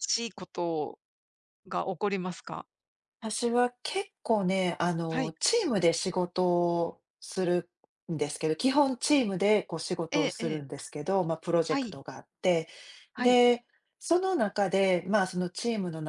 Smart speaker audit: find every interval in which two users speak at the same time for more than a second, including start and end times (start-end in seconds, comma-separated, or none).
none